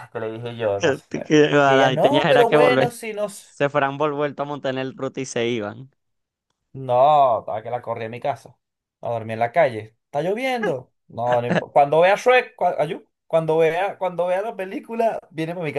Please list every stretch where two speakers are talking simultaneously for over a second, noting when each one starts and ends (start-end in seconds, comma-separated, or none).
0.8-3.3